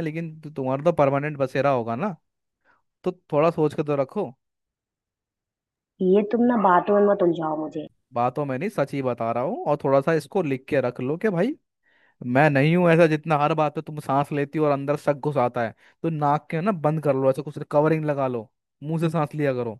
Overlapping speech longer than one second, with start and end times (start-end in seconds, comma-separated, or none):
none